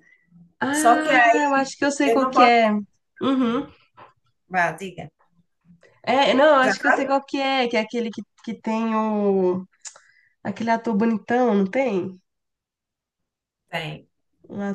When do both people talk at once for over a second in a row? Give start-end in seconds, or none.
0.7-2.5